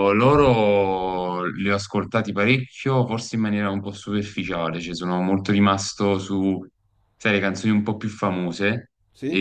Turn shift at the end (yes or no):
no